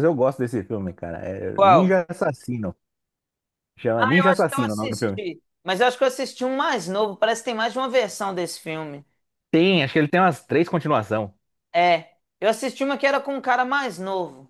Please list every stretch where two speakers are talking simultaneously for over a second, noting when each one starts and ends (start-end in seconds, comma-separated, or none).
4.0-5.2